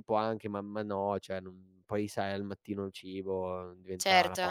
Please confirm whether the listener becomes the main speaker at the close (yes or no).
yes